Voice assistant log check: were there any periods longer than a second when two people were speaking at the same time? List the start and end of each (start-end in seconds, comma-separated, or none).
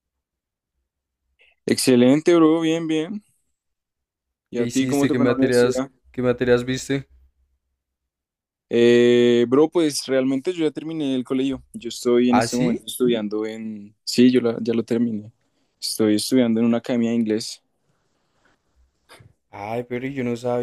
4.5-5.9